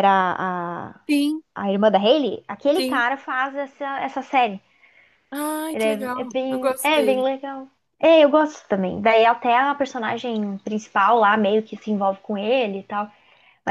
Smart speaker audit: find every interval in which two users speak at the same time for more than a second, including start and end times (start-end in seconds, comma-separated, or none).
5.7-7.3